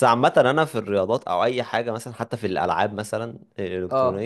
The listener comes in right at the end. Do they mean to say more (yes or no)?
no